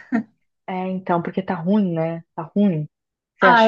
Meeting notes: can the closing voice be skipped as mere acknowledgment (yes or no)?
no